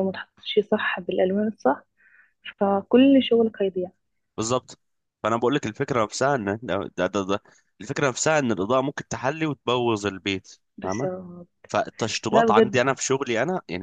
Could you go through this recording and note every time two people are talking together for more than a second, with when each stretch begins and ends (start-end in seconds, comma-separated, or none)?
none